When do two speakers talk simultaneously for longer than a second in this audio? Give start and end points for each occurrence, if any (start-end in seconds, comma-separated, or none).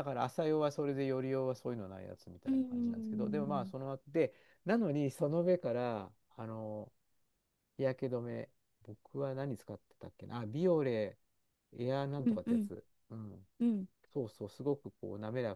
2.5-3.7